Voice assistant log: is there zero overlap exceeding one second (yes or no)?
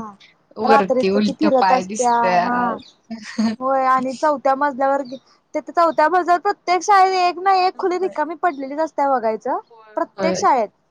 no